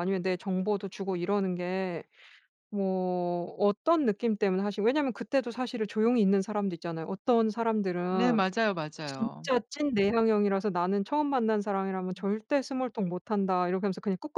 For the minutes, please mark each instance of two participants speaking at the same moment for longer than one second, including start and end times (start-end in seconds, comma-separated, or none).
none